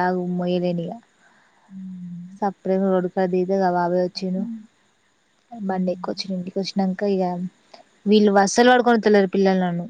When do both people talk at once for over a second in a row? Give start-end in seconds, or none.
none